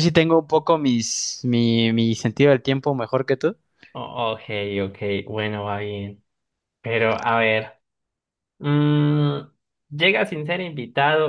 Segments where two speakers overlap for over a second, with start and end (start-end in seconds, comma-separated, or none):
none